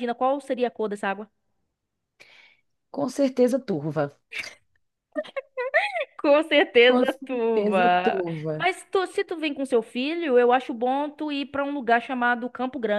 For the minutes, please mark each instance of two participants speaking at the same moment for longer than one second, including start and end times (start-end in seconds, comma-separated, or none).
6.8-8.7